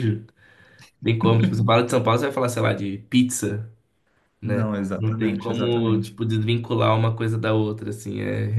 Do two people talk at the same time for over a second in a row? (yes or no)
yes